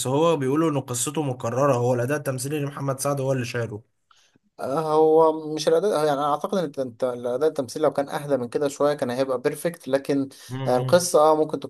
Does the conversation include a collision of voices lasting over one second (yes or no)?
no